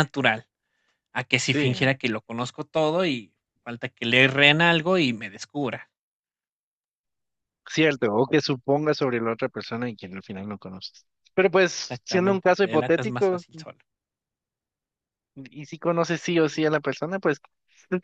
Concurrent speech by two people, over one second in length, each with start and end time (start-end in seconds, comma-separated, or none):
11.8-13.4